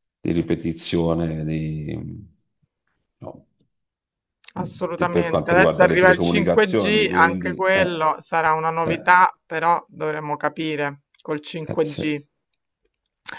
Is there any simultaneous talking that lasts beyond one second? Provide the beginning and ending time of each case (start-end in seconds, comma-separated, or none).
4.5-8.1